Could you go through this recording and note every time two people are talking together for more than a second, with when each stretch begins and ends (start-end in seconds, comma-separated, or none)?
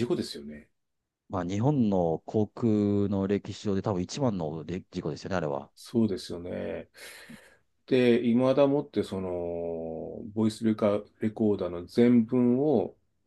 none